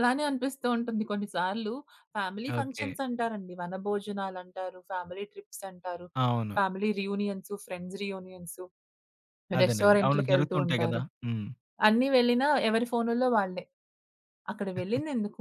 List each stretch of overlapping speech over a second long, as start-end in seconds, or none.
9.6-11.0